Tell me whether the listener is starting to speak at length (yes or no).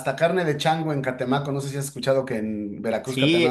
yes